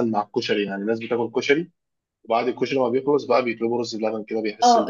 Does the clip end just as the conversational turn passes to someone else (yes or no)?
yes